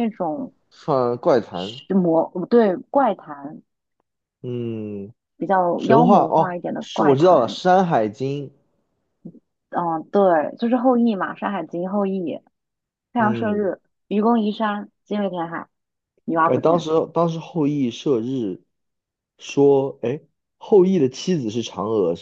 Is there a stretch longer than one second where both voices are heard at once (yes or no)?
yes